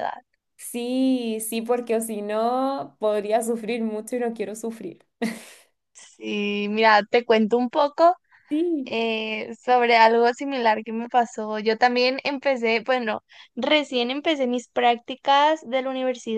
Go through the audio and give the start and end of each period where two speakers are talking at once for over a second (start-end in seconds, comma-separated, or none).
none